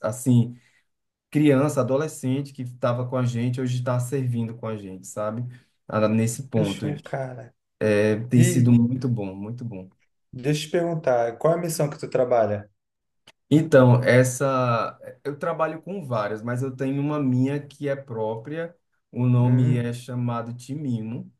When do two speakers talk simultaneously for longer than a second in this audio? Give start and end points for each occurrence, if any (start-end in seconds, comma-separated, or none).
none